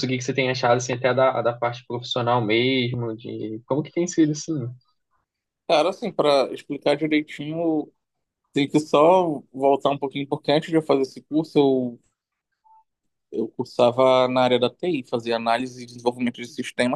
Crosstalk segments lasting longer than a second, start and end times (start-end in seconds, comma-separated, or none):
none